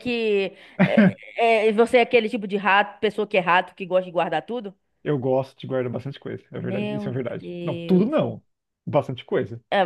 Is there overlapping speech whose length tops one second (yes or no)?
yes